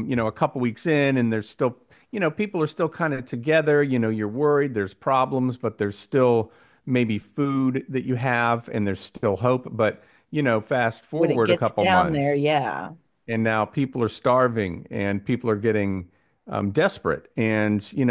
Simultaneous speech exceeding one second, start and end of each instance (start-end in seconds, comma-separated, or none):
11.1-12.4